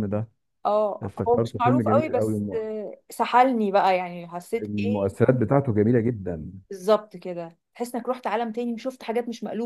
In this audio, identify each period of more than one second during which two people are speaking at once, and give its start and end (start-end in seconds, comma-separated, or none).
1.0-2.6